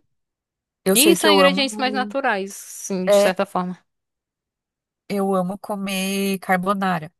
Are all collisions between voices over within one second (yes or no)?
no